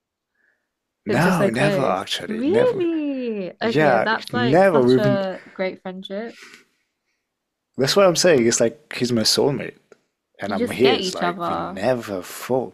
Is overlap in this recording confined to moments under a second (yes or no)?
no